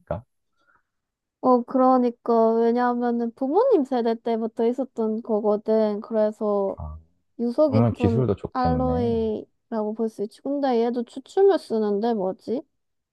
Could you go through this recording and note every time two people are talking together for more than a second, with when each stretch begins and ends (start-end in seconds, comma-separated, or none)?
7.6-9.2